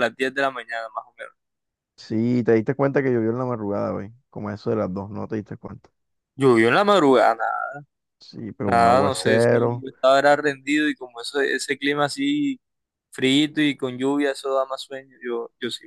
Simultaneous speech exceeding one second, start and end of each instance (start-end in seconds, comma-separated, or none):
8.6-9.8